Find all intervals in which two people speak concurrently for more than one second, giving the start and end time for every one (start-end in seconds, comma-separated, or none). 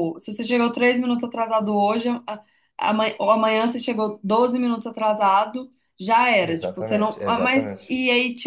6.4-7.9